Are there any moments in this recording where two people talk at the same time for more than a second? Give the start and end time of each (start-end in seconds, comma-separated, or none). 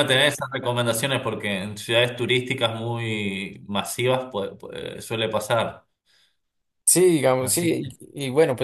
none